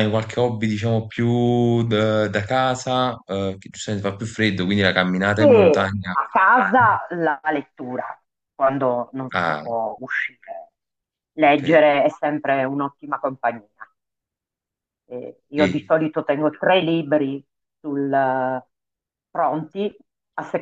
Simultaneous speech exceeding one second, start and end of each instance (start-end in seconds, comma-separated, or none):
none